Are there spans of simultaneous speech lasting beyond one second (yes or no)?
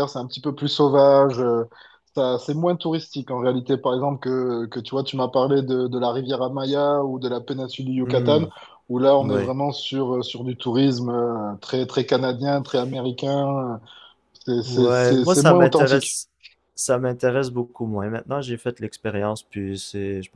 yes